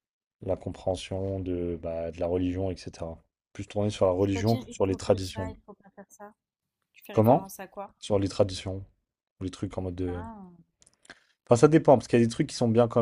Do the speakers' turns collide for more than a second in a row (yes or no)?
yes